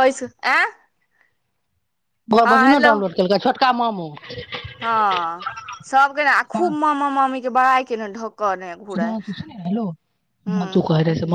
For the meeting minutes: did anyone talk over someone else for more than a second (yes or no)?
no